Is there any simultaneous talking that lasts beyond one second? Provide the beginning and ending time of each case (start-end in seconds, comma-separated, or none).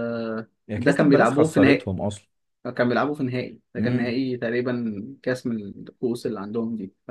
0.7-1.9